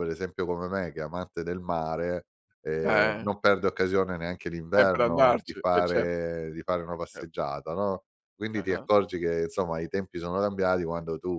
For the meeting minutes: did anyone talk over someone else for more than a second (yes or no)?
yes